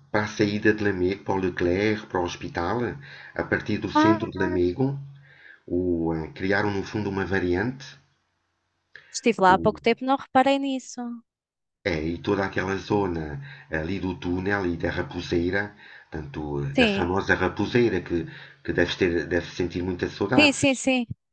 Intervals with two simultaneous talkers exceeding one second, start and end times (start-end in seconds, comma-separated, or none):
none